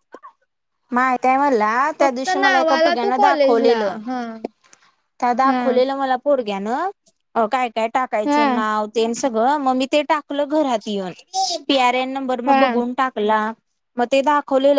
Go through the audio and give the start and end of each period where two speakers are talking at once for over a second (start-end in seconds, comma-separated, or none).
2.0-4.0